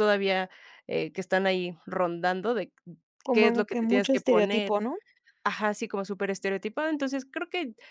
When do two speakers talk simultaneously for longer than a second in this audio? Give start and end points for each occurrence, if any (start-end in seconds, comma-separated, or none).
3.3-4.7